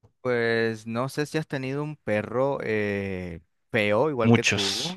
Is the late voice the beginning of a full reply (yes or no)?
no